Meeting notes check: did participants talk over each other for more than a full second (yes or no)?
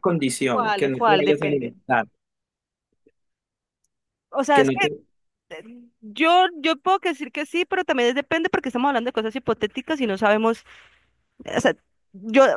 yes